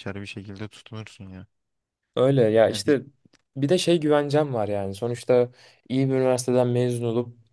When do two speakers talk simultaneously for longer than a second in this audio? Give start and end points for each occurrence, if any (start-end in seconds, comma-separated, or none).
none